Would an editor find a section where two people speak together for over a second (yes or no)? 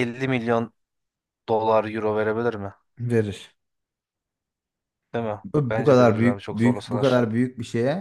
yes